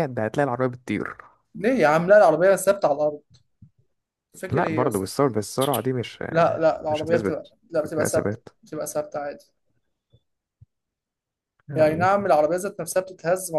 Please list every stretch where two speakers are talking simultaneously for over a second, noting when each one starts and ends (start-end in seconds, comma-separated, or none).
6.9-8.5